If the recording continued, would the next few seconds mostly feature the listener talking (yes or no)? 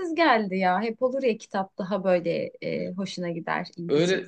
yes